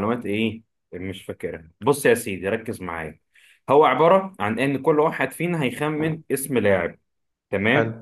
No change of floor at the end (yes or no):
yes